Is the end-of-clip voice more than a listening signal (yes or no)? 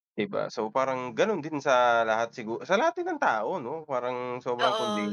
no